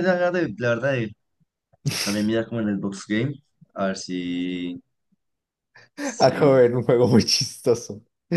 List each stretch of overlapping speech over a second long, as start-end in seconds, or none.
none